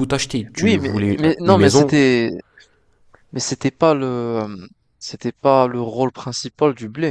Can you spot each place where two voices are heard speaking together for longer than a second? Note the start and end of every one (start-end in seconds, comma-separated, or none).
0.6-2.0